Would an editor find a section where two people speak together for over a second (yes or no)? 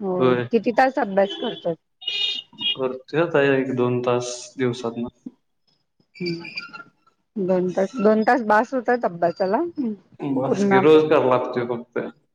no